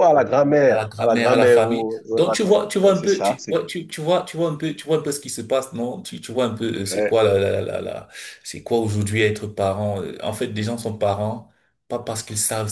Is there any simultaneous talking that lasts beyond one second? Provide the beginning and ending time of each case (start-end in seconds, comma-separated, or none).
0.7-3.6